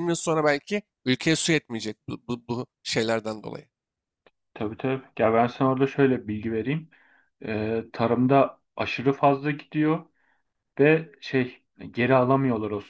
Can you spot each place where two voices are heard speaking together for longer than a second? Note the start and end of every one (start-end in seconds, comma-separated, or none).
none